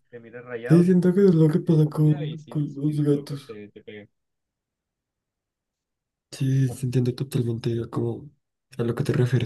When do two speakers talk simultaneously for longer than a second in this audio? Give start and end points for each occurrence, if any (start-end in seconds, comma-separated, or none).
1.6-3.5